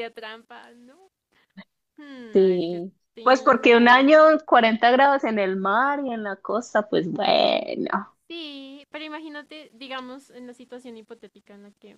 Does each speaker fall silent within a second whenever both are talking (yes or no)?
no